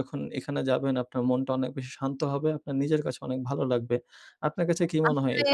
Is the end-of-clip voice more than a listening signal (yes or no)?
no